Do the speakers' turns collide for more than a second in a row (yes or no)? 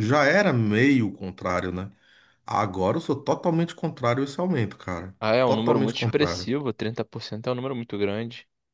yes